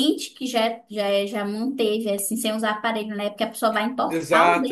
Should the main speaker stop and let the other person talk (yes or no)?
yes